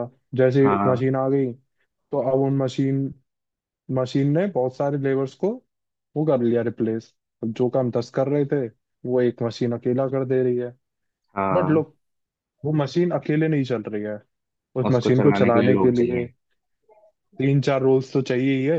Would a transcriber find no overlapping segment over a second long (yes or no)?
no